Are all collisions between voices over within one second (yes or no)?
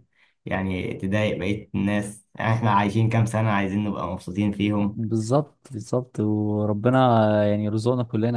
yes